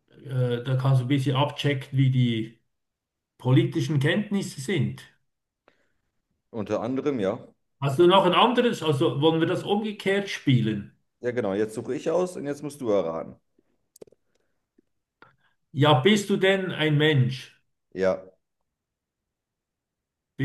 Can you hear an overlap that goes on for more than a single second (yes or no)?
no